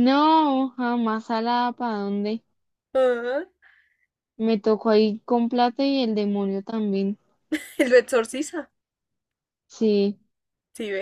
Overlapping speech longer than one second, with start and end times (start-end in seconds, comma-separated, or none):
none